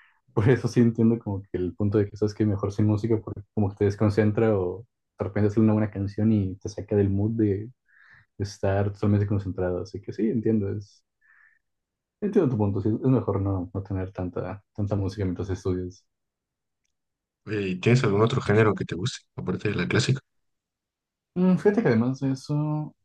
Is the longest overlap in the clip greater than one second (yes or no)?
no